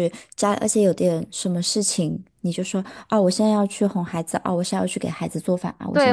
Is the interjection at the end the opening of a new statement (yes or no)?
yes